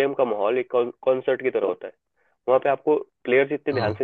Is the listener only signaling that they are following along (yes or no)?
yes